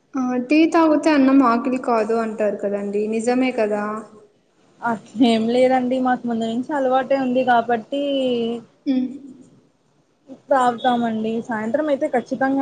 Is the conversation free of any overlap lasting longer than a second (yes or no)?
yes